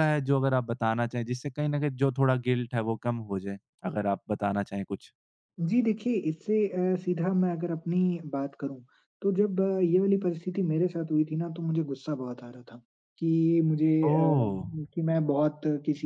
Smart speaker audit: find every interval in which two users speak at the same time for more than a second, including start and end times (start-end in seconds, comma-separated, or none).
none